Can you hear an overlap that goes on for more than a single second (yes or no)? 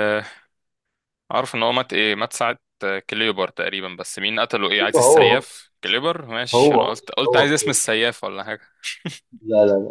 yes